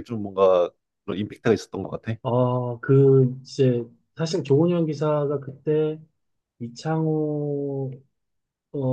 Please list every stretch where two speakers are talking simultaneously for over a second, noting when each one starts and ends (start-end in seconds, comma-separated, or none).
none